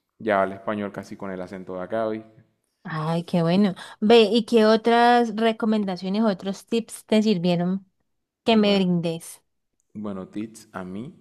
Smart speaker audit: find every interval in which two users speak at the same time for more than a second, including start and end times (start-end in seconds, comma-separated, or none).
none